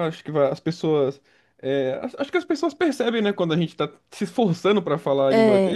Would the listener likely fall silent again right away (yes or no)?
yes